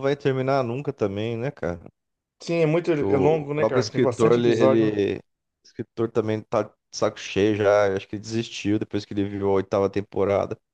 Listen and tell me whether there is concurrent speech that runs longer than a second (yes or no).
yes